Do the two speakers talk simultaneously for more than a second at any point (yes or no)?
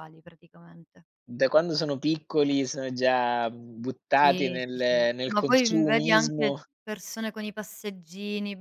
yes